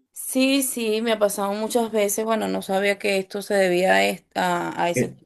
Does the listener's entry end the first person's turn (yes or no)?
no